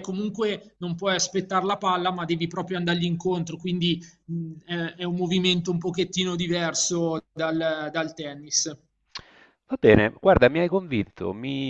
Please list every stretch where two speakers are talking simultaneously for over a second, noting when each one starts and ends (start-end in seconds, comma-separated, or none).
none